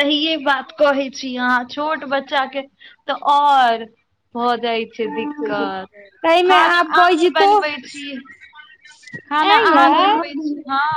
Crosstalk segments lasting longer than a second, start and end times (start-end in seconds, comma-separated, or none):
5.1-6.9